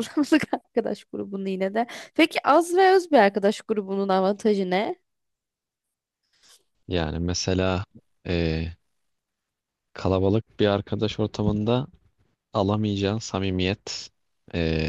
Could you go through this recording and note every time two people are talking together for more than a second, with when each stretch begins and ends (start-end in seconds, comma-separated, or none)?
none